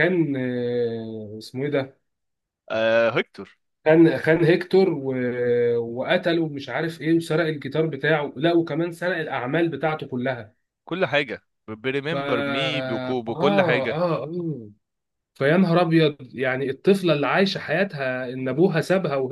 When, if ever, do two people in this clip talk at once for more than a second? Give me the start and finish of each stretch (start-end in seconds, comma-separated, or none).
12.1-14.0